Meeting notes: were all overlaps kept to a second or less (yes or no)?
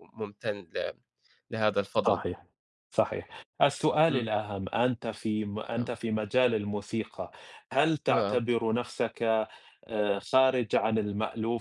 yes